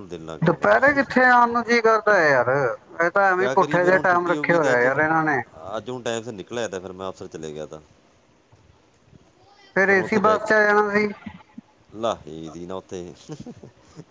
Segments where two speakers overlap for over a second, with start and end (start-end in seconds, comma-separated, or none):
3.4-4.8